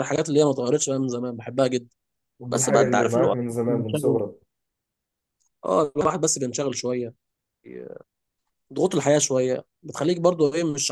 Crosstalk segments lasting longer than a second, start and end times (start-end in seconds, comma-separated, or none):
2.5-4.2